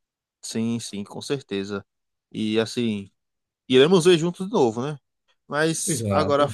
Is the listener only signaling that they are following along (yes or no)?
yes